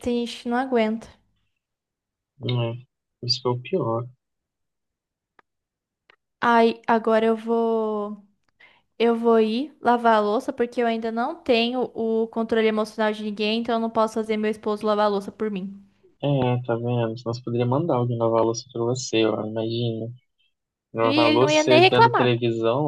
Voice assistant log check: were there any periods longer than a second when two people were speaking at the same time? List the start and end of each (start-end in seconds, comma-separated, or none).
21.0-22.3